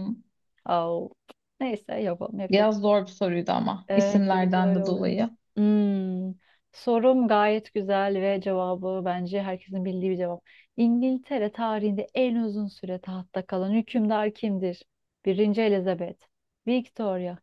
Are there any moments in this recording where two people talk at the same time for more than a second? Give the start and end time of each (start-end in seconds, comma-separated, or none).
3.9-5.1